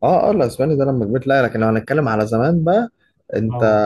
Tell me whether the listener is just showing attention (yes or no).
yes